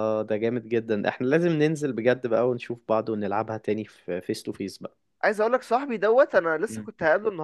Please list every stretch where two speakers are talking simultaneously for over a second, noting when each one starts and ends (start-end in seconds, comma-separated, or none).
none